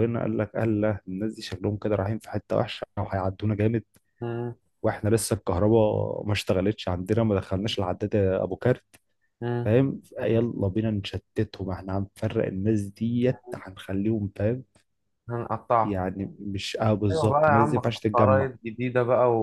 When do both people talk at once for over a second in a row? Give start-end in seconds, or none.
17.1-18.5